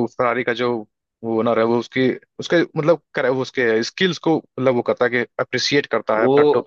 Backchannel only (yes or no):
no